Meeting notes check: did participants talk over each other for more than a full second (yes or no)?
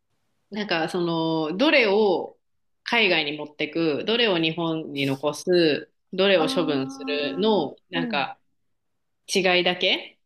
yes